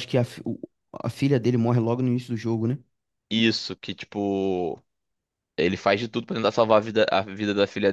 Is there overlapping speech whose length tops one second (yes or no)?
no